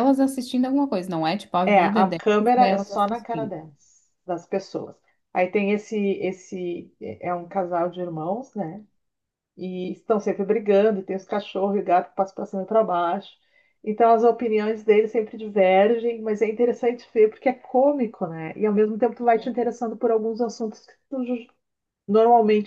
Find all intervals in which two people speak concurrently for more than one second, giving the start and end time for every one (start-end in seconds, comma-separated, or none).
1.6-3.5